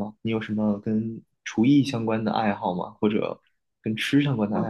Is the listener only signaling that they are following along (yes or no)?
no